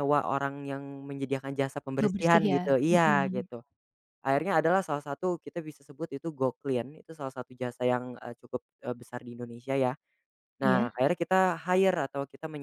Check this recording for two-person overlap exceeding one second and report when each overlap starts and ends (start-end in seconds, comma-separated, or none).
2.0-3.5